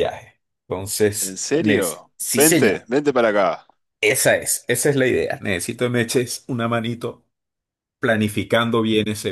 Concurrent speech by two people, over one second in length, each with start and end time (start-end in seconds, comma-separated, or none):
1.2-2.9